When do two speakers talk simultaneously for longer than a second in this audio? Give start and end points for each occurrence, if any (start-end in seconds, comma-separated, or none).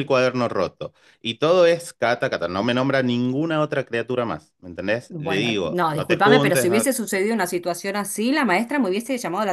5.1-6.9